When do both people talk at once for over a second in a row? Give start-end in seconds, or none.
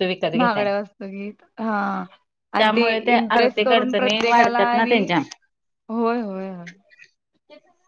3.1-5.0